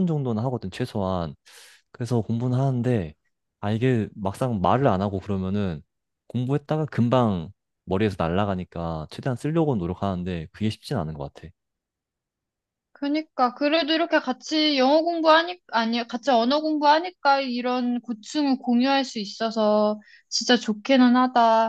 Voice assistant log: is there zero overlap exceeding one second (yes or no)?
yes